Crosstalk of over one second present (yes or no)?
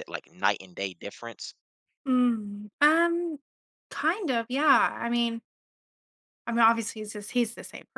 no